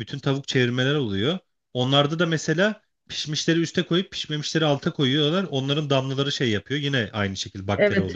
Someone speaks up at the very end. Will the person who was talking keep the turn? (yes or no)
no